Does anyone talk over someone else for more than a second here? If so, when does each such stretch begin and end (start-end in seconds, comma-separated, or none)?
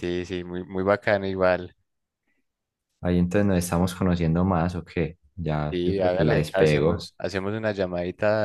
5.7-7.1